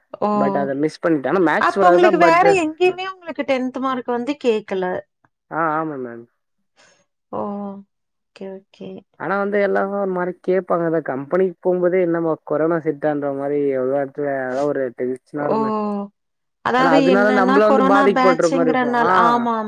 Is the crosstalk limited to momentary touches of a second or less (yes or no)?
no